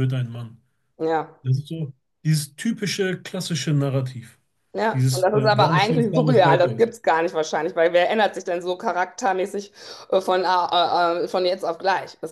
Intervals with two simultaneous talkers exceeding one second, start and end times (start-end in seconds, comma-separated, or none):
4.9-6.9